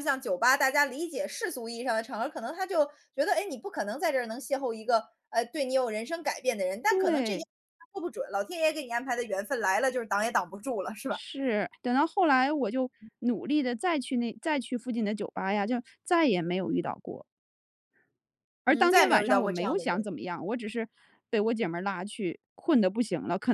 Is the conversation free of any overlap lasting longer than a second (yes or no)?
no